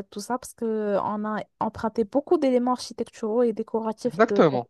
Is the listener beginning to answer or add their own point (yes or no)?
yes